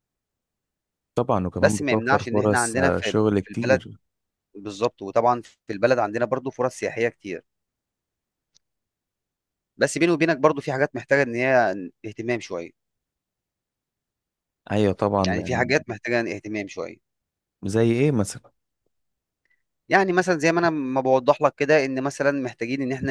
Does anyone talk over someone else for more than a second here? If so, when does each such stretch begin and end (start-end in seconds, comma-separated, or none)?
1.6-3.8